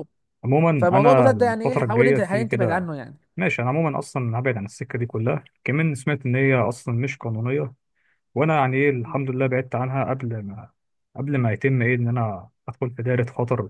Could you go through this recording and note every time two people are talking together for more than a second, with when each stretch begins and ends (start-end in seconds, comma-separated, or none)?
0.8-2.9